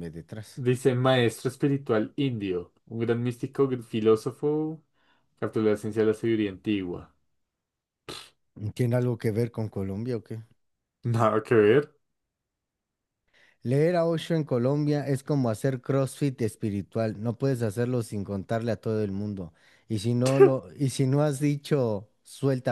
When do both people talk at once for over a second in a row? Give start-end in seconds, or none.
none